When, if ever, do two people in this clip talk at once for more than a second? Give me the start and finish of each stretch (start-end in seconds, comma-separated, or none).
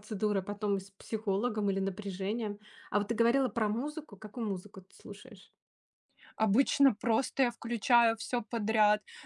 none